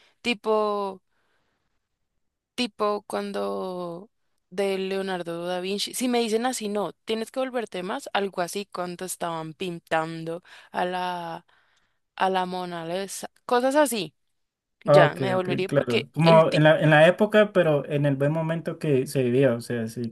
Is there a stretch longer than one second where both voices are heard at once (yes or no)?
yes